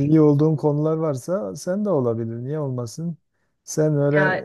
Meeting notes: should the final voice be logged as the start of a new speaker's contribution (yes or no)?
no